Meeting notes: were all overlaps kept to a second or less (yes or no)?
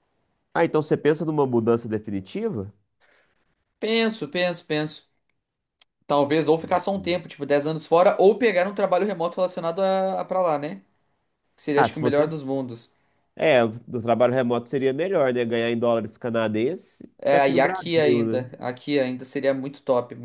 no